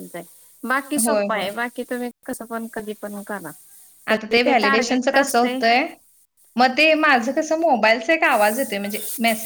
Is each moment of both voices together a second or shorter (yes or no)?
no